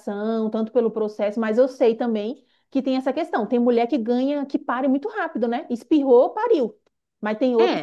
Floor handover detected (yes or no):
yes